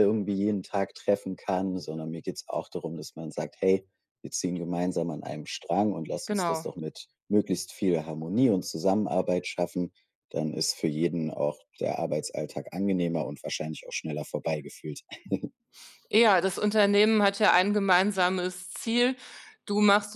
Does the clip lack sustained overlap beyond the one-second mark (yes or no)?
yes